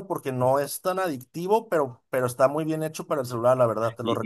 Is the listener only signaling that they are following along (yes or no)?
no